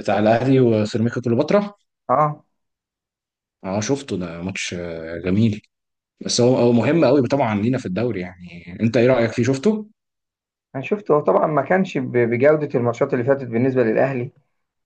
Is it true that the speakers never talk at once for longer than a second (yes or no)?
yes